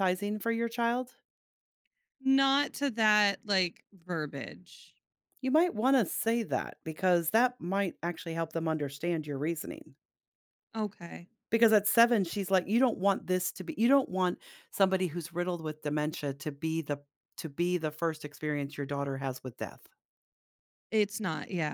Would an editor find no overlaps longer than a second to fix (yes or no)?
yes